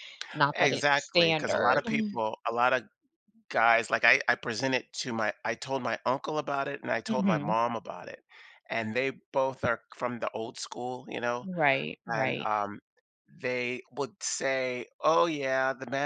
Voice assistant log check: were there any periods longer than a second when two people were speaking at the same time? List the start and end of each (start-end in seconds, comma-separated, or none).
0.5-1.8